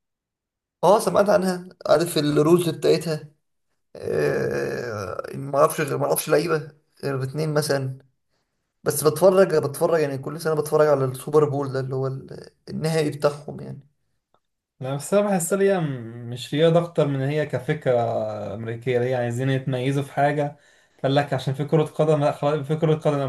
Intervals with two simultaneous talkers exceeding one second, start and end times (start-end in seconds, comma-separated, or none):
none